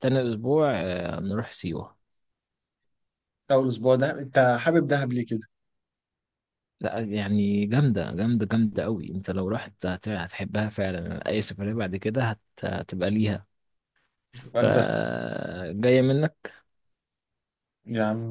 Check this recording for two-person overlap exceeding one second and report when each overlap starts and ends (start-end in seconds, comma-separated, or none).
none